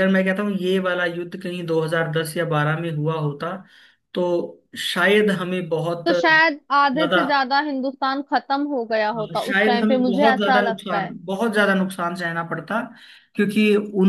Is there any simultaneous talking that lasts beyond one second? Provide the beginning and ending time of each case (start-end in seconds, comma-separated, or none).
9.4-11.1